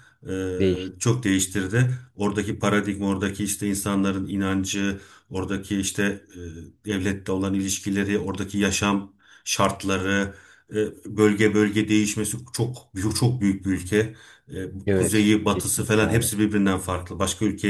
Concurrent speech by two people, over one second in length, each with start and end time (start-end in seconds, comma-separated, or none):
14.9-16.3